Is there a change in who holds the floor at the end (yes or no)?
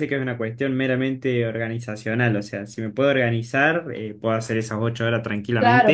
yes